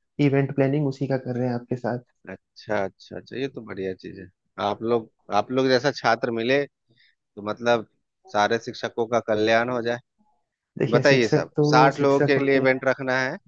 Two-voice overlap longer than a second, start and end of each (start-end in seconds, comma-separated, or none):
10.9-12.8